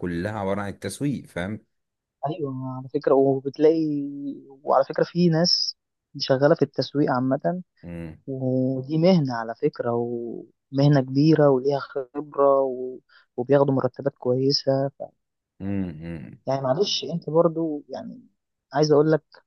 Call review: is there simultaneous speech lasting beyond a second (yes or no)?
no